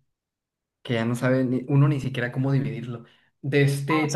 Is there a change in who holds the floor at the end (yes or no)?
no